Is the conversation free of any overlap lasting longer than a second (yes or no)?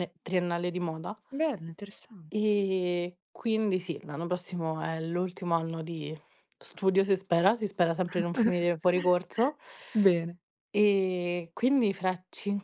yes